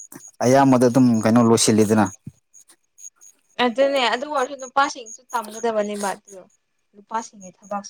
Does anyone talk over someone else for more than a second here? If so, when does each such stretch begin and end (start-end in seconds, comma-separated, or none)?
none